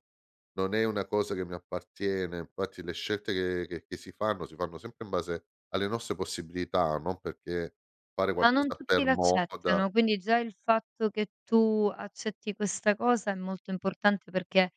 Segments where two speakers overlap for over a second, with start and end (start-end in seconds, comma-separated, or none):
8.4-9.8